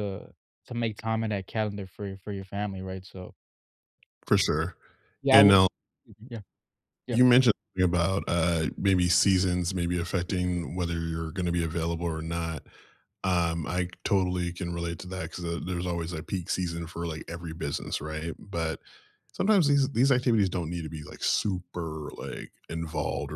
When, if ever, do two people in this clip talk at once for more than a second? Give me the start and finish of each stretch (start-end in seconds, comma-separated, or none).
none